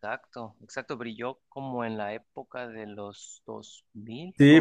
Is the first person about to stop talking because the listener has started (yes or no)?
yes